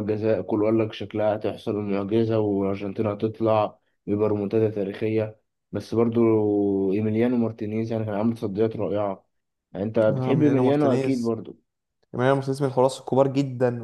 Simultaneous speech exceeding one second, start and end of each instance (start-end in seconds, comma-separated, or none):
10.1-11.3